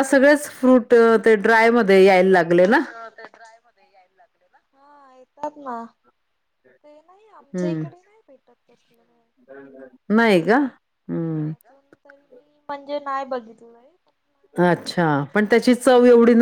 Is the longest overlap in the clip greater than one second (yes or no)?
yes